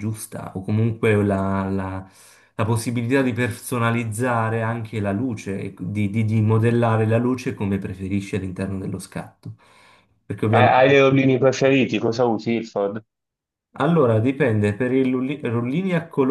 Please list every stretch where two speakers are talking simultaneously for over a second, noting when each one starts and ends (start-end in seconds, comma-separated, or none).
none